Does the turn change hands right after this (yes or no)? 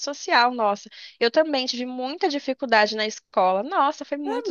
yes